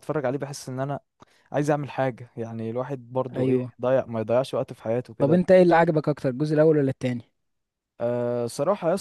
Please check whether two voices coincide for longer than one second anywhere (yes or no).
no